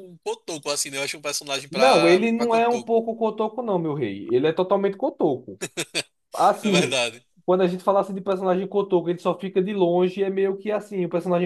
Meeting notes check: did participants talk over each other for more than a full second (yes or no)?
yes